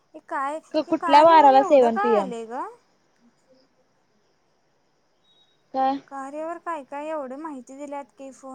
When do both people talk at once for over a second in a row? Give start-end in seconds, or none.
0.9-2.3